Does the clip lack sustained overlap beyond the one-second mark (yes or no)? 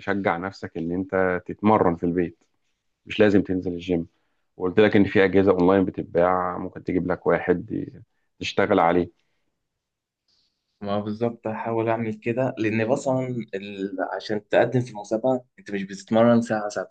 yes